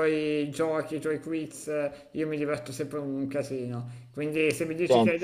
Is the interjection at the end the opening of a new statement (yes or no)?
no